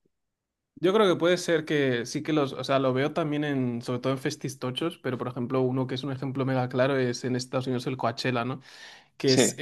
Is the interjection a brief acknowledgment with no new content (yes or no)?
yes